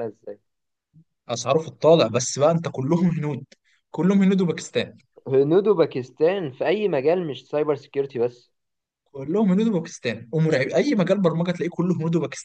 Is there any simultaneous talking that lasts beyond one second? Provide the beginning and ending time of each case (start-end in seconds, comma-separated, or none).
none